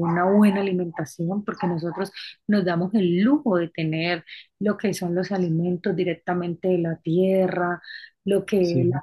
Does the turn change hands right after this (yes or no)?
no